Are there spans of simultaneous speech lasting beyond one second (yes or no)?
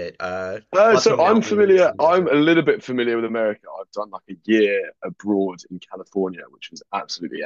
yes